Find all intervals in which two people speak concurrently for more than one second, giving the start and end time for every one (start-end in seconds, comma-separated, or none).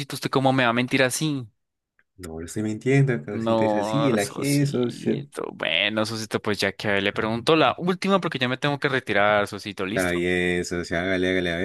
3.3-5.2